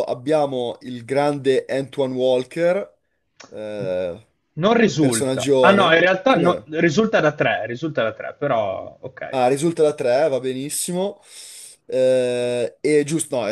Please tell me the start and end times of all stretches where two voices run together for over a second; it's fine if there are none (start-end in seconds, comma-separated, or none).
5.0-6.7